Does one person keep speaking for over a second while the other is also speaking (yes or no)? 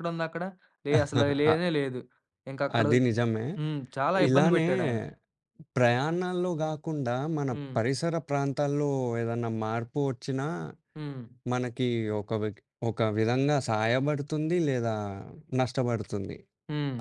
no